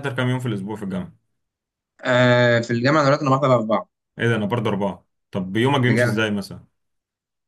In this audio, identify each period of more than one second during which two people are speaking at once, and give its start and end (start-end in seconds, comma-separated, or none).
none